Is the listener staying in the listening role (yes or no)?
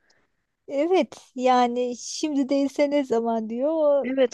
no